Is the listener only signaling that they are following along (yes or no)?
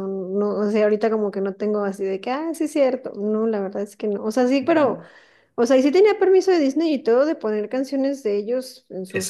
no